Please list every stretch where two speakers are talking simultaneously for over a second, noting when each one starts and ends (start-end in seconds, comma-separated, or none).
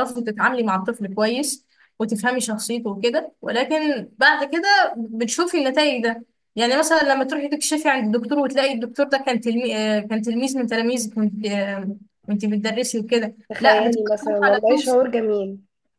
13.5-15.0